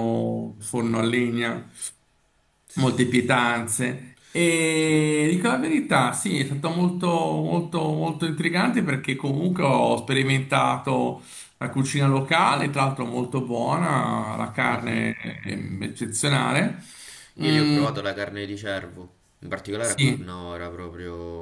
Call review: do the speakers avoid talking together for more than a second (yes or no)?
yes